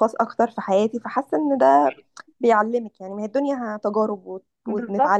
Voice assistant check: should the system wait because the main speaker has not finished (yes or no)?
no